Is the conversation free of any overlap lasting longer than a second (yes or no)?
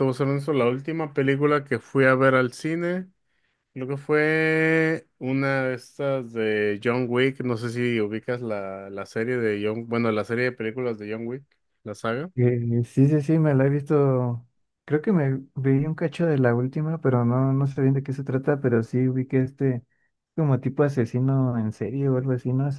yes